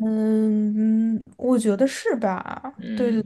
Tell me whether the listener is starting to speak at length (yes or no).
yes